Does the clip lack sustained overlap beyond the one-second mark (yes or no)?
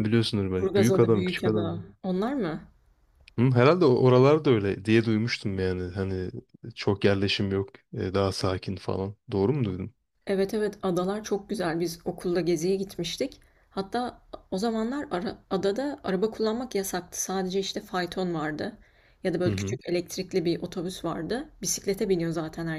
no